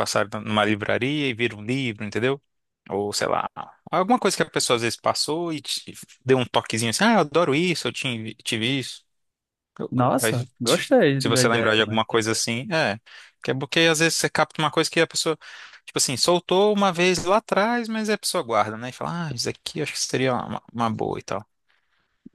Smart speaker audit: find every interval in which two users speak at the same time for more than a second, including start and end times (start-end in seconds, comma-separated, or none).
9.9-12.0